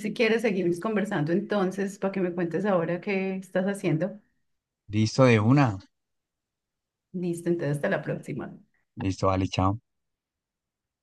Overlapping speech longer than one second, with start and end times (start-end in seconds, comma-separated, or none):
none